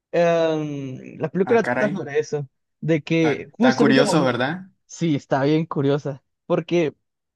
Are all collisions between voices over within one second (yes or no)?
no